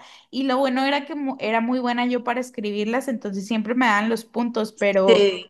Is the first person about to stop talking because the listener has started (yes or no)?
no